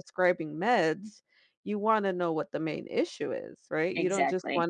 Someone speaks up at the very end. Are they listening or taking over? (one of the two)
listening